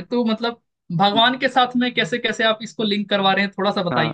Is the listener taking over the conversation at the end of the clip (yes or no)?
yes